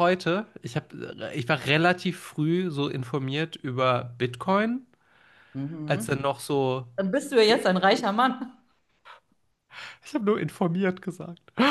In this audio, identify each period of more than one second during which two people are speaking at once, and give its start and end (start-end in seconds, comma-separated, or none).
none